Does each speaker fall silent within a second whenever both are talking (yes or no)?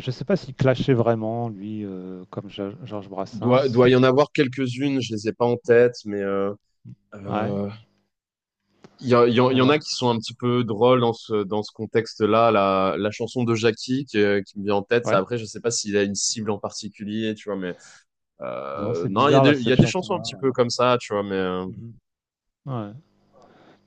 no